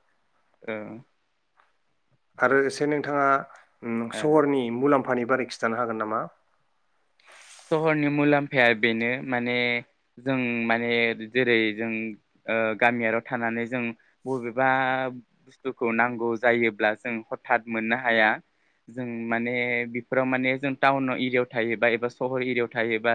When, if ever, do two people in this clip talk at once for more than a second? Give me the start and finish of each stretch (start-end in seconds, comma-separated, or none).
none